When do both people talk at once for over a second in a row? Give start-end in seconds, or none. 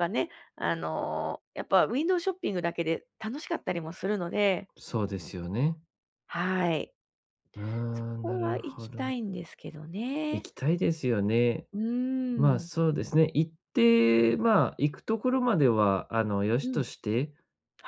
7.9-9.1